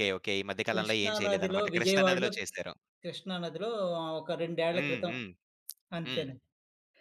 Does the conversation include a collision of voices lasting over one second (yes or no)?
yes